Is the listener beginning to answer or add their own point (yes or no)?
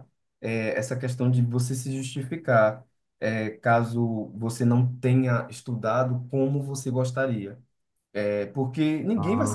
no